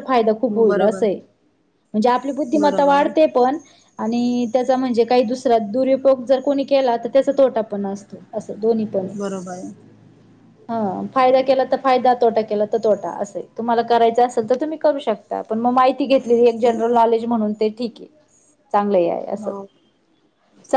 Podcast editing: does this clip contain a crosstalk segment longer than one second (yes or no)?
no